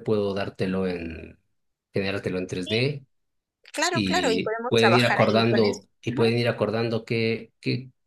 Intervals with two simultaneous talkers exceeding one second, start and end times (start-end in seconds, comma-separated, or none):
3.9-6.3